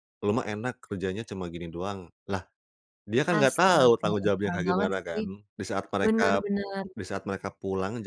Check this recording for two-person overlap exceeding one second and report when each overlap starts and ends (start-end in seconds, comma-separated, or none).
3.3-5.2